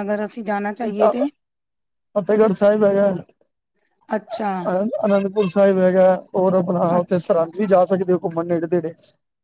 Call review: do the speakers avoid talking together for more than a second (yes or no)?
yes